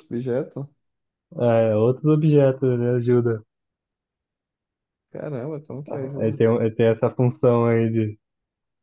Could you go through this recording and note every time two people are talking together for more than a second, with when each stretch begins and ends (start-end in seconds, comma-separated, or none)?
none